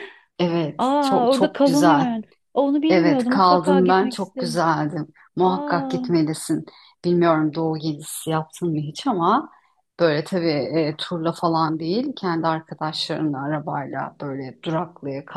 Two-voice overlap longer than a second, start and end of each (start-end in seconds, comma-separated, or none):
0.8-2.1, 2.9-4.6